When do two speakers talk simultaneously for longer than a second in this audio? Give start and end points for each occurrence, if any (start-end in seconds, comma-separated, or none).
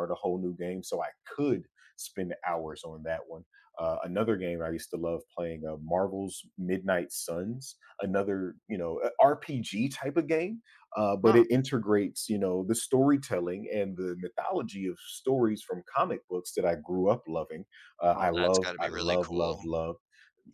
18.1-19.6